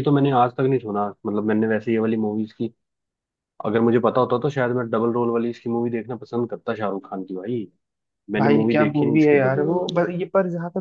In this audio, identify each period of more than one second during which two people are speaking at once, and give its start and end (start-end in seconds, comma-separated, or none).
8.4-10.0